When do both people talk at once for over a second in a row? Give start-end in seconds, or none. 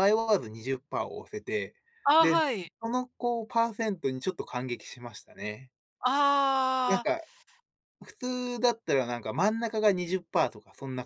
none